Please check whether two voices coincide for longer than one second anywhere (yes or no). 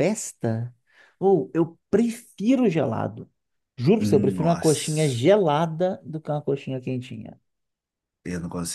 yes